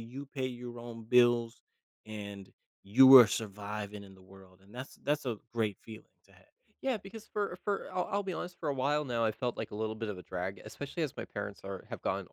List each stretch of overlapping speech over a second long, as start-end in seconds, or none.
none